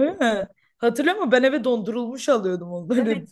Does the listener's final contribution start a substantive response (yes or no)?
yes